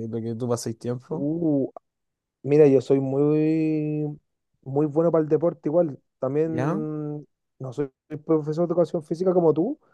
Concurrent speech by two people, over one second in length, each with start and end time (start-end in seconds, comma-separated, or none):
none